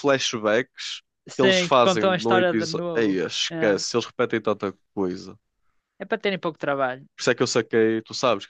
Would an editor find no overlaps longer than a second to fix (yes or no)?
no